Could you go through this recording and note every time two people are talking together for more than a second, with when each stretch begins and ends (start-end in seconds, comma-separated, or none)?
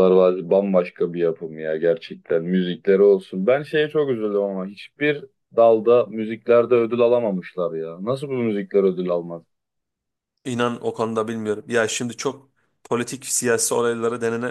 none